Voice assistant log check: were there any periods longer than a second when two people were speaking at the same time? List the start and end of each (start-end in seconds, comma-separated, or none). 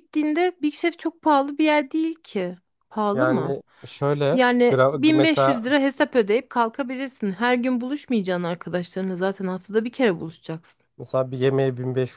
4.3-5.8